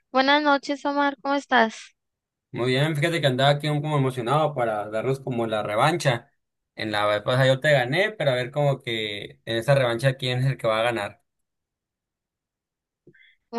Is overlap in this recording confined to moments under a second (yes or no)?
yes